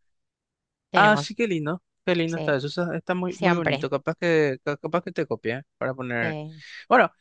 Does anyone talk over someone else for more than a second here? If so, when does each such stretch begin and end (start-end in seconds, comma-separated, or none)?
none